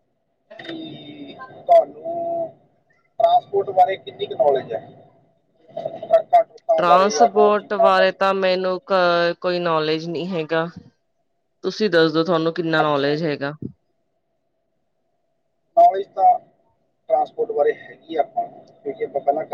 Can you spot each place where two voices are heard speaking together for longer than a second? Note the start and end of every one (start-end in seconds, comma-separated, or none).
none